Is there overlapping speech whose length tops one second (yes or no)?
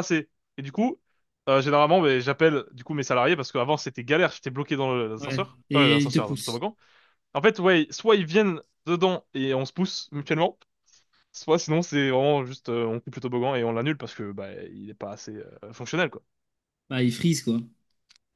yes